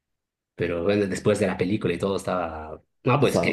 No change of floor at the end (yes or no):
yes